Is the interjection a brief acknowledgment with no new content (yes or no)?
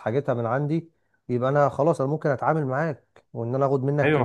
no